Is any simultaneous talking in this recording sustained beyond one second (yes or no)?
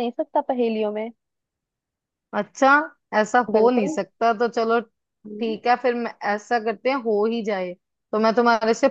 no